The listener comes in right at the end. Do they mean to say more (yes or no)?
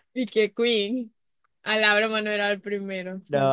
yes